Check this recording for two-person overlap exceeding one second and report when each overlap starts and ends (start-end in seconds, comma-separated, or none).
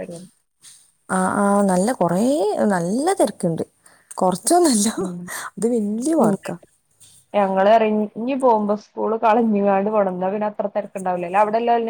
none